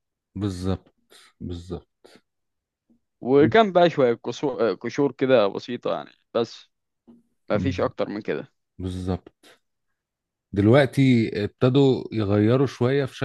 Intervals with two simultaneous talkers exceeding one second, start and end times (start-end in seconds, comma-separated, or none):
none